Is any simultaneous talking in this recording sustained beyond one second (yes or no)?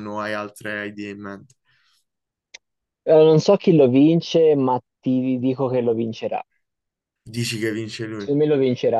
no